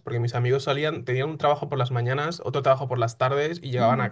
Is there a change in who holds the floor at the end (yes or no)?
no